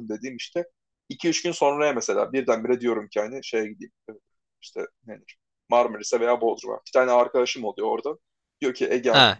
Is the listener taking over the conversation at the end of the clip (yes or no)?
yes